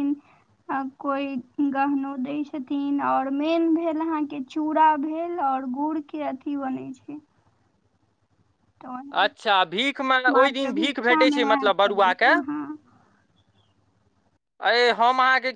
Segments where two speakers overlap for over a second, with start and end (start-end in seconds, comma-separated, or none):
10.4-12.3